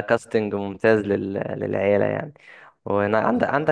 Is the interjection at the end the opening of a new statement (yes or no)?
no